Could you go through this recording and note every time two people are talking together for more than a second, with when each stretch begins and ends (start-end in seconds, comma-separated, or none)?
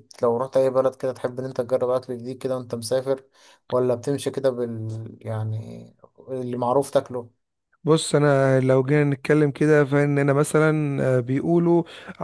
none